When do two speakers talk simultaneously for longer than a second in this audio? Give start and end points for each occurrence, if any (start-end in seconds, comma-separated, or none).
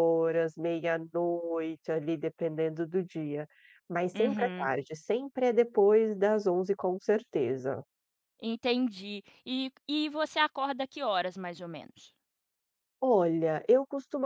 none